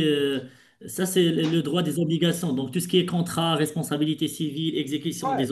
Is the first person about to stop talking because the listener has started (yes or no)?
no